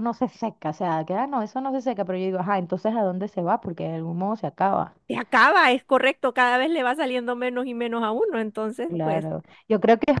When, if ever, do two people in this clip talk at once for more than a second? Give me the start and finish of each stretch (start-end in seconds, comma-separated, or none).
none